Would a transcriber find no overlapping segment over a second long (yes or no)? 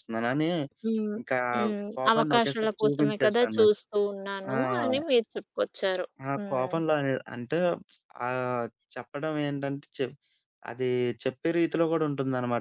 no